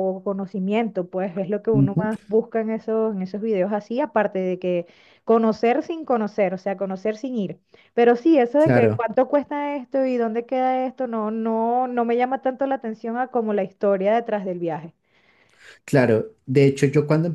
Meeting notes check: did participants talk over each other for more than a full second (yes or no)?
no